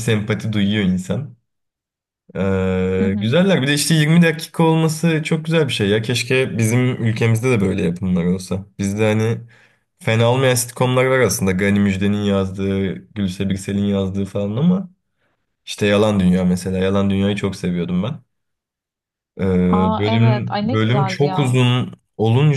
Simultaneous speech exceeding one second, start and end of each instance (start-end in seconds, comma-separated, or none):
20.0-21.6